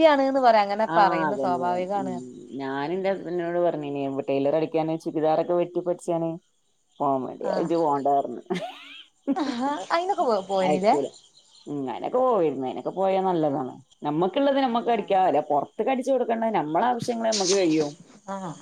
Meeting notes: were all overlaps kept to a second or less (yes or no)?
yes